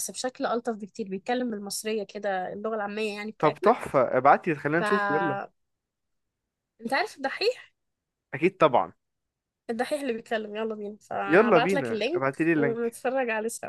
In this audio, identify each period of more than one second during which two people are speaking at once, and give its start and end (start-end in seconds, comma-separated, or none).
11.3-13.0